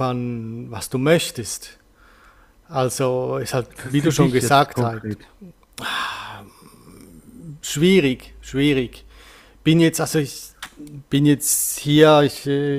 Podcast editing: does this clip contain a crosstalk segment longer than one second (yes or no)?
yes